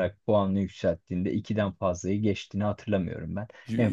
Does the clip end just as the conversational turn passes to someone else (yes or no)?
no